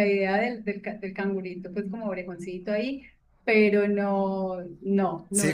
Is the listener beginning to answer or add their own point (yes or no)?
yes